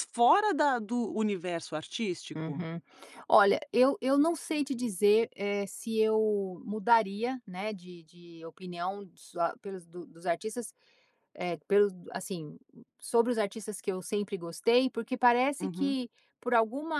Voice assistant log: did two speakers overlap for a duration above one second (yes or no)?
no